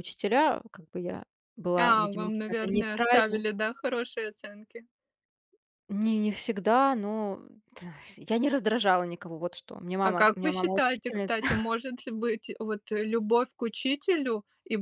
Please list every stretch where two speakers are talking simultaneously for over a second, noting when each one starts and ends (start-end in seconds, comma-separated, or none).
1.8-3.4, 10.0-11.3